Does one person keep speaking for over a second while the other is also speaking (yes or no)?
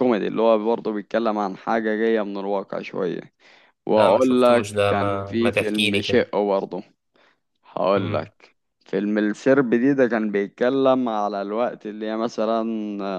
yes